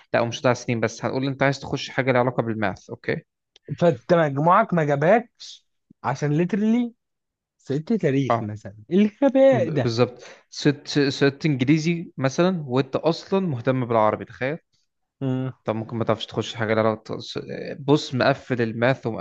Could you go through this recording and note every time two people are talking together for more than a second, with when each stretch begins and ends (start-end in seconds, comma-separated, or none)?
none